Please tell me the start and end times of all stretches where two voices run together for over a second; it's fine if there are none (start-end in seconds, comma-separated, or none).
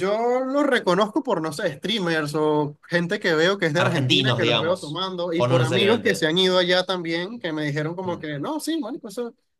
3.8-6.3